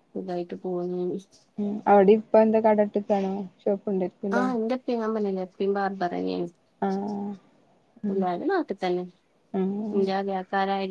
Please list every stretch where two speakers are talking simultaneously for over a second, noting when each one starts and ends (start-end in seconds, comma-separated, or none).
none